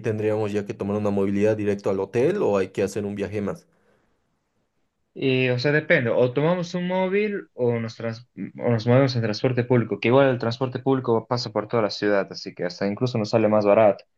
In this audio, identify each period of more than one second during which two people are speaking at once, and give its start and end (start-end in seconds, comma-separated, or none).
none